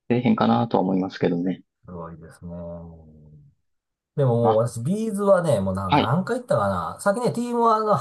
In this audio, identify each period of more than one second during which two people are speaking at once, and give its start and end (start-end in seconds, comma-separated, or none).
none